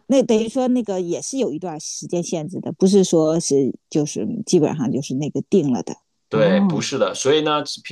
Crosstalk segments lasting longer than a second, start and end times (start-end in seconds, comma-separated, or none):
none